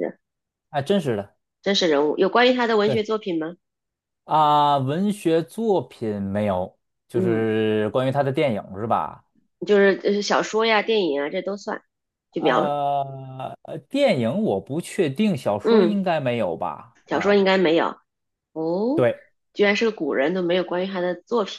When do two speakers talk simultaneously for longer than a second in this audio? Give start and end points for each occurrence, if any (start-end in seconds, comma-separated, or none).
none